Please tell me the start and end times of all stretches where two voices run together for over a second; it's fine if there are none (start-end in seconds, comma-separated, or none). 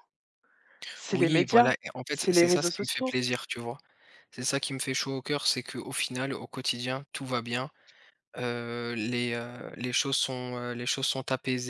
1.1-3.1